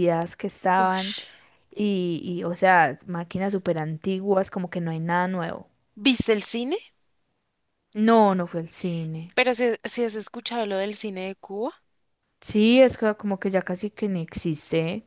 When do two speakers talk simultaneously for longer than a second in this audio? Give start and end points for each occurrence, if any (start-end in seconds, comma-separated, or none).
none